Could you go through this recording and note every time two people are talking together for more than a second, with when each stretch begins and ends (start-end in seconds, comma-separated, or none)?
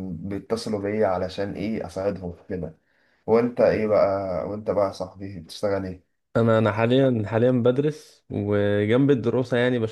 none